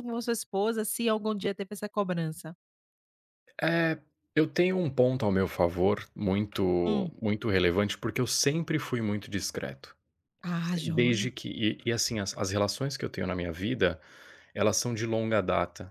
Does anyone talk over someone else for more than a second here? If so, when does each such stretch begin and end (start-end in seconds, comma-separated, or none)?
none